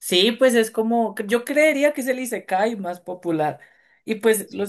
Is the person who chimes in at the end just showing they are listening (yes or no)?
yes